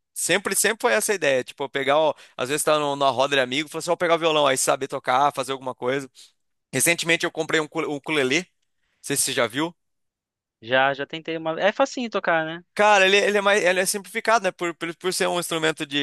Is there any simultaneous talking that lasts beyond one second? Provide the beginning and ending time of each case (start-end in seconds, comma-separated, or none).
none